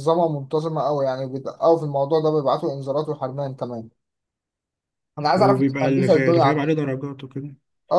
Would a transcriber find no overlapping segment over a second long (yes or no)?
no